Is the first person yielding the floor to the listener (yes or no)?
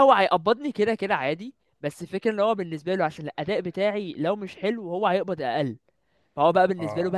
no